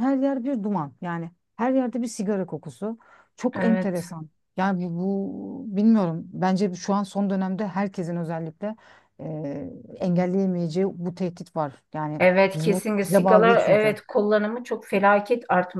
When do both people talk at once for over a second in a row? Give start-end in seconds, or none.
12.2-14.0